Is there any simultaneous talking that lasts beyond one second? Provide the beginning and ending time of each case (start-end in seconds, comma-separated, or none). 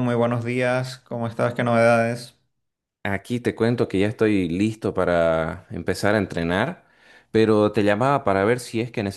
none